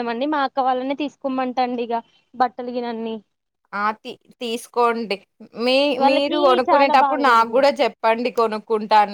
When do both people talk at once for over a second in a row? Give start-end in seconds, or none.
6.0-7.7